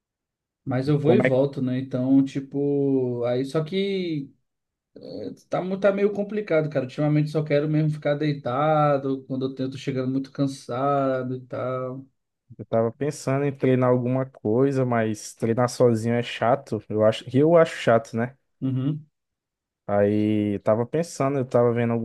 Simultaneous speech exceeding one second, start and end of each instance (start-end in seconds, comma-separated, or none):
none